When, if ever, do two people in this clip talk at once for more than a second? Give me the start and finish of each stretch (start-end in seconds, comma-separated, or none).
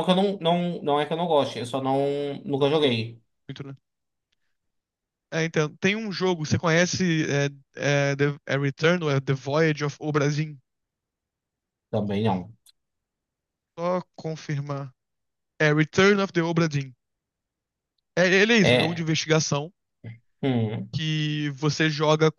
none